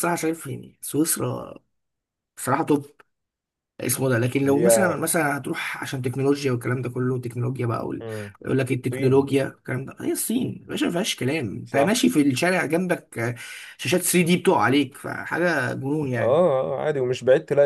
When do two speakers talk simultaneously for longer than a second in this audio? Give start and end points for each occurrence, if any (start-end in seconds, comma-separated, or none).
none